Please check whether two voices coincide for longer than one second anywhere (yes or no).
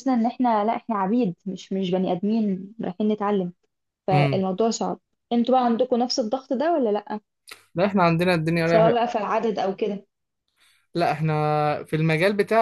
no